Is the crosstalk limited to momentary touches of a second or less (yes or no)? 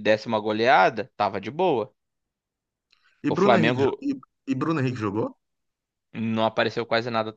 yes